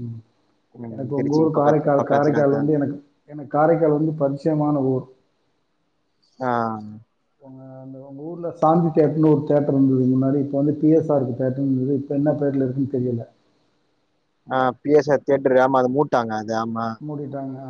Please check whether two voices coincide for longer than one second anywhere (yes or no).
yes